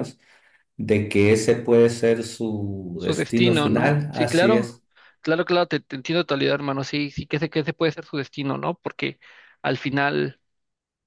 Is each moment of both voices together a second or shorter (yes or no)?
no